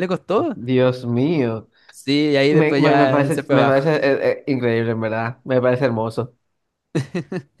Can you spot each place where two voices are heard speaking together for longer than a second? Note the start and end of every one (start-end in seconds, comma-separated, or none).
2.5-3.9